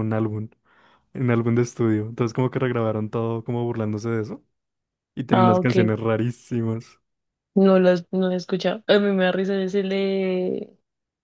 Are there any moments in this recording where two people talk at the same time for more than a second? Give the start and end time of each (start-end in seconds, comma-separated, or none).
none